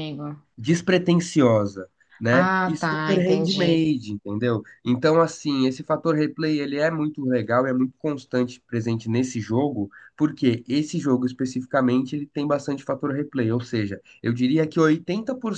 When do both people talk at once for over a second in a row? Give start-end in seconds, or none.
2.3-3.9